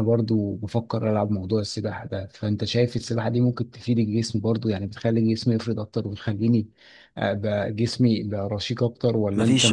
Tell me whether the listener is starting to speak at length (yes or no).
yes